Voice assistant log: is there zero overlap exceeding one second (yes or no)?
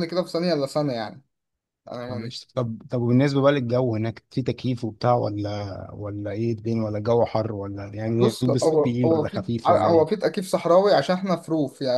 no